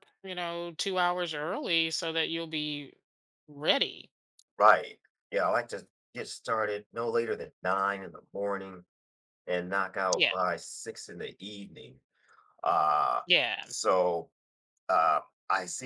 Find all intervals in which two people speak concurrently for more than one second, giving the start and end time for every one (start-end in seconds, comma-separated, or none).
none